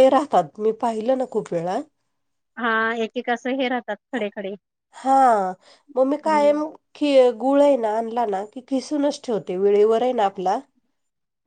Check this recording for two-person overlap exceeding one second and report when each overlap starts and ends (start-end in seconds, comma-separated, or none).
none